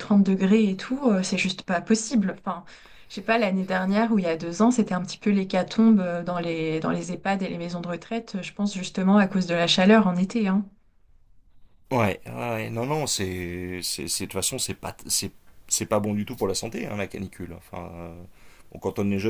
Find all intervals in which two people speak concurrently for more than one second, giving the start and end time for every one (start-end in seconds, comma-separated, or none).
none